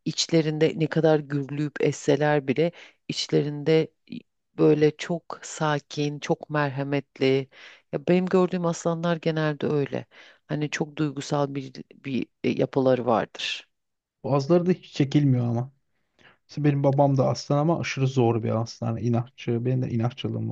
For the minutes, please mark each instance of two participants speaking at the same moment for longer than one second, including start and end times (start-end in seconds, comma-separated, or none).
none